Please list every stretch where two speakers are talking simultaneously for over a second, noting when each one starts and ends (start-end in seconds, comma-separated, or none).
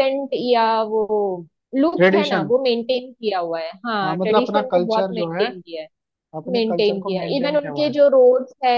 4.0-5.4, 6.5-8.0